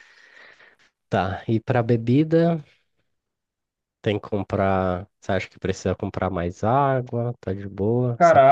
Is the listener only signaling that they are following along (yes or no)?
no